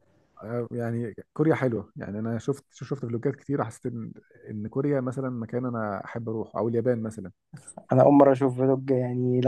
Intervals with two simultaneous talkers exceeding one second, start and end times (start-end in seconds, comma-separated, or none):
none